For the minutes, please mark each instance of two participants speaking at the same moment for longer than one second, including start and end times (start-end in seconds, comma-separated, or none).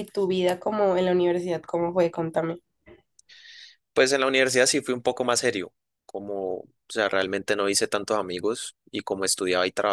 none